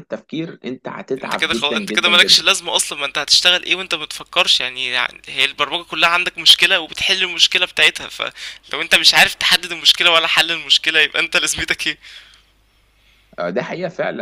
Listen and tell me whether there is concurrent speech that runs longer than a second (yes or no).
yes